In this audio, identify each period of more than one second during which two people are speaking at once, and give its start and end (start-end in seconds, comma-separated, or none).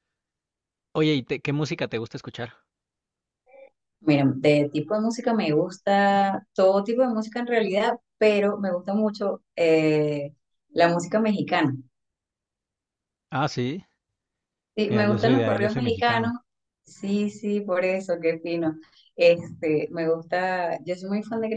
14.9-16.3